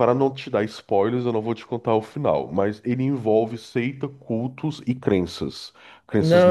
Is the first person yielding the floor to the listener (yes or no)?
yes